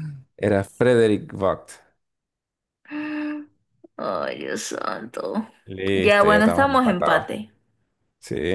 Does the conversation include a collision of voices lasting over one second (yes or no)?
yes